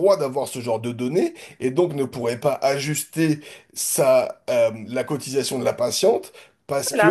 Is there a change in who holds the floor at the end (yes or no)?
yes